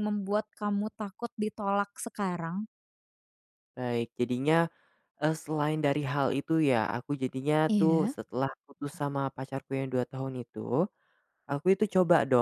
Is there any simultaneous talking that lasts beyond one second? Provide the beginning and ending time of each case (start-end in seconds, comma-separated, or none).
none